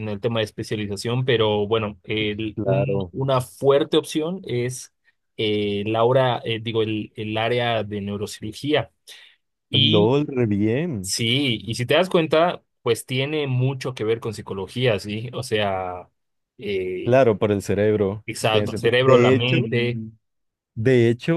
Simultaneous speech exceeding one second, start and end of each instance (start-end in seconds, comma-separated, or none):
18.2-19.7